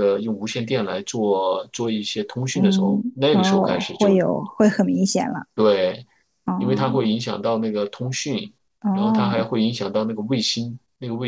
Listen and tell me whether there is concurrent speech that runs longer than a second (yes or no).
yes